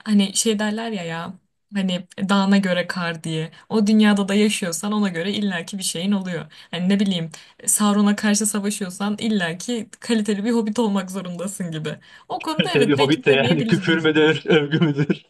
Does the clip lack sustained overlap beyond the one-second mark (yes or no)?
no